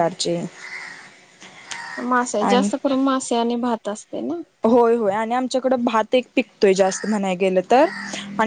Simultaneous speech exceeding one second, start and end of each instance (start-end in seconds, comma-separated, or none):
none